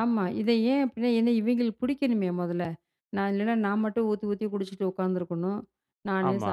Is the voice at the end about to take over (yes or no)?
no